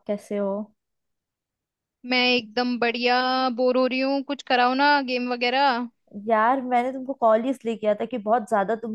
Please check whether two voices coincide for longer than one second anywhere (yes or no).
no